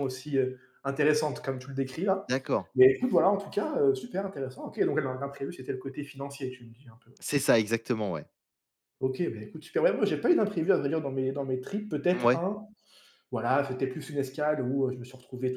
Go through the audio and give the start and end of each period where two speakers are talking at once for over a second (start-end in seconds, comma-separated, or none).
none